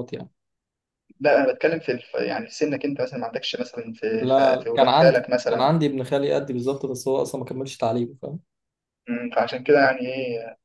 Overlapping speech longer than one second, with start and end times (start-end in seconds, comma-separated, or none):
4.2-5.7